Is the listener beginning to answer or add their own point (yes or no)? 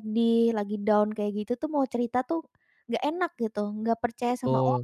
yes